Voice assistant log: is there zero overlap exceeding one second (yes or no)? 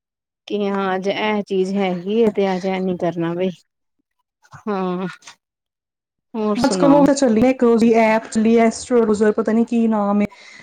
yes